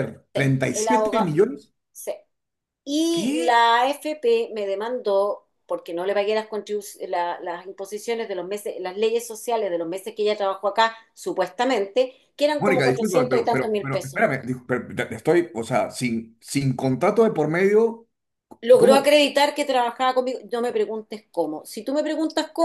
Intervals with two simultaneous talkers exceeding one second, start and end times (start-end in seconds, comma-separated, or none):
12.6-14.2